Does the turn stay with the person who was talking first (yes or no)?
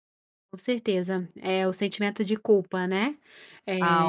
no